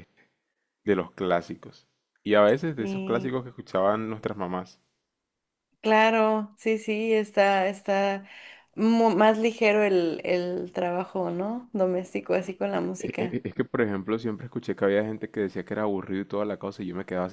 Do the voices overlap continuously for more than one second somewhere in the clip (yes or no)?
no